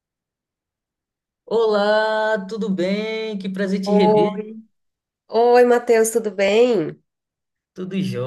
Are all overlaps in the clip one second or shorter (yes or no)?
yes